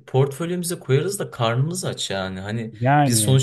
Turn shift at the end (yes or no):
no